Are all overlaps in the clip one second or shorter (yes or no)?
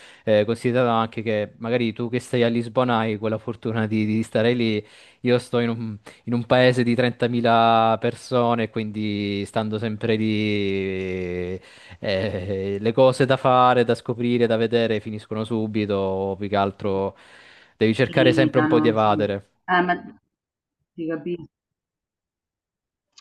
no